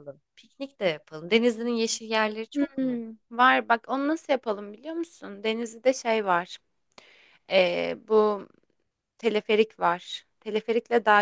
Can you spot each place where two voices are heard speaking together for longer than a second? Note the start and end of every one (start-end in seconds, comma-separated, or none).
none